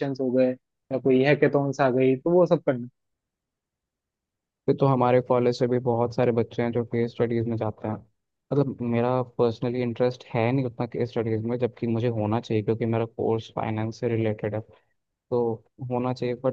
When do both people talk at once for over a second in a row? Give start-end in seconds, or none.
none